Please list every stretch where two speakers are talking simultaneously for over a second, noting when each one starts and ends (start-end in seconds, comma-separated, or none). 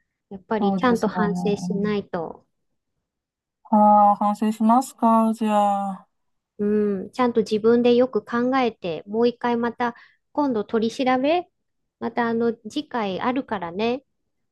0.6-1.9